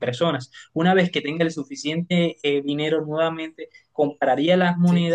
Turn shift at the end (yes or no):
no